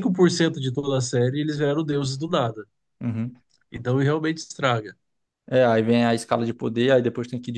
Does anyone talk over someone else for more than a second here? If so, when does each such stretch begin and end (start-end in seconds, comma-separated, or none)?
none